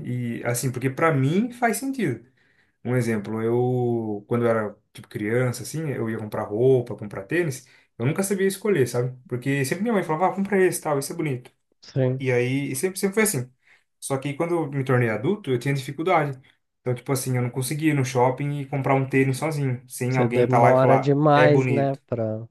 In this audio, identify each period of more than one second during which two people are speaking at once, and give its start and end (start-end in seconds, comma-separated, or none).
20.1-22.0